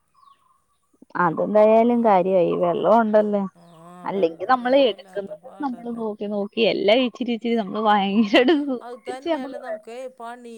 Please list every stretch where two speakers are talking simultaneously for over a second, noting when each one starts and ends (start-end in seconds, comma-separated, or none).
4.1-6.0